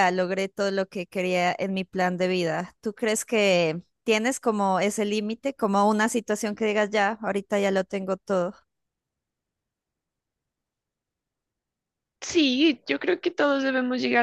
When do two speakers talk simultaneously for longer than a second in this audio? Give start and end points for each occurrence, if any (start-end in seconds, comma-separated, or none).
none